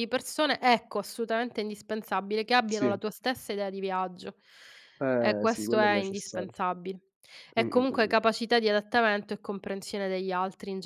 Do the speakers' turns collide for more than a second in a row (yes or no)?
yes